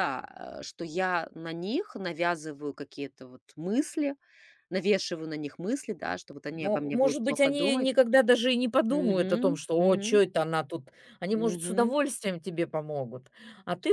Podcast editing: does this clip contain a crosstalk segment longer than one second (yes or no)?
yes